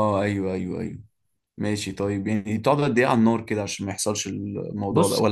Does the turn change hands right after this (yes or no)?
yes